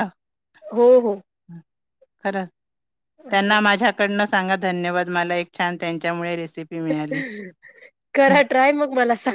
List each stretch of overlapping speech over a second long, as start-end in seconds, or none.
none